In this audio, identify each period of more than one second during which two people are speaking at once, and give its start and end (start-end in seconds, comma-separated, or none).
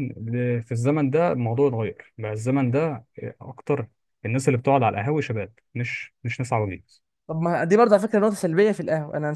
none